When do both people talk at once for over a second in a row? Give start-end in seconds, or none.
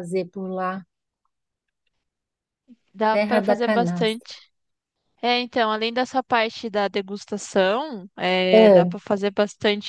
3.1-4.4